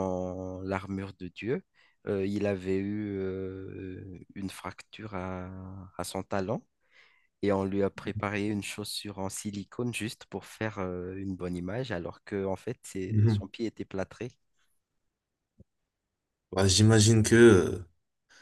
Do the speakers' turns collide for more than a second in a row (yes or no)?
no